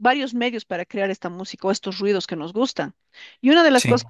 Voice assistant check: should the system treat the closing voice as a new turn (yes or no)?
no